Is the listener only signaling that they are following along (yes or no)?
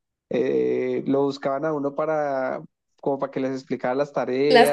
yes